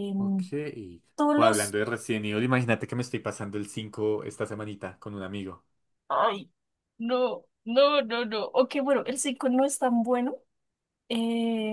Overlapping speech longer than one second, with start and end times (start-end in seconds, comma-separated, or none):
none